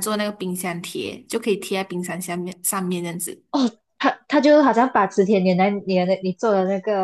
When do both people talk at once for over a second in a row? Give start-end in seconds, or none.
none